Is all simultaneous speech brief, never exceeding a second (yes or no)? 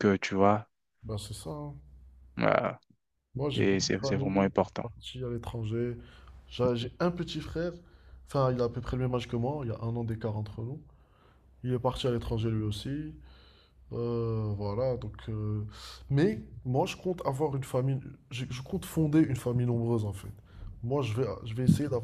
no